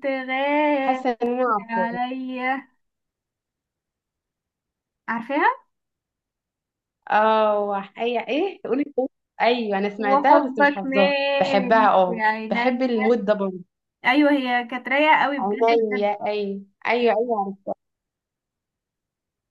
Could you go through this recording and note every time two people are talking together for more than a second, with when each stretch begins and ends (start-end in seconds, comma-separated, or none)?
10.0-12.9